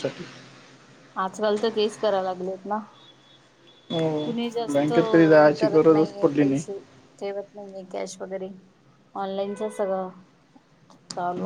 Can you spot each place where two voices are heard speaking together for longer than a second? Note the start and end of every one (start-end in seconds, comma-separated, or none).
4.2-6.6